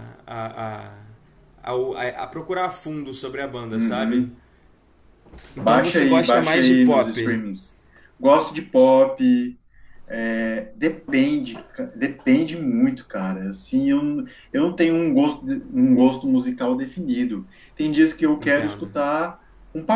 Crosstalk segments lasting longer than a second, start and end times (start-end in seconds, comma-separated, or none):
5.6-7.4